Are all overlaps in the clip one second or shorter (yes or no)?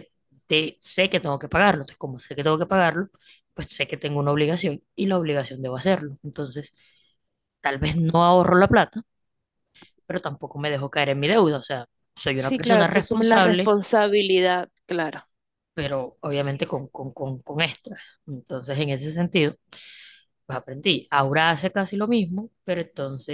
no